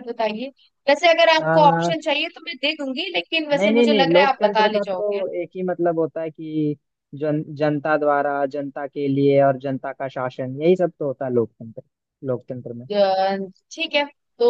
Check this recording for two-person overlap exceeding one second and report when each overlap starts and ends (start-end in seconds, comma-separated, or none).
3.5-5.2